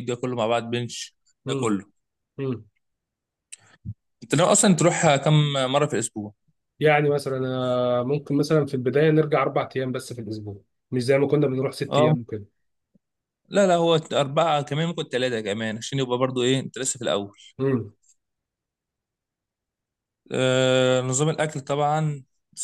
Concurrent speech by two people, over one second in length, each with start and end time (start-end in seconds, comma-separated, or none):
none